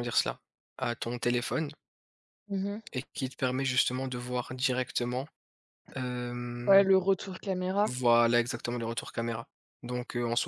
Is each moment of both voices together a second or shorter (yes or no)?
yes